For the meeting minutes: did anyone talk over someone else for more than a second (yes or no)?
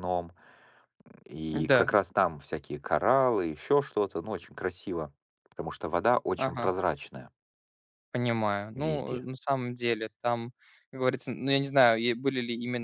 no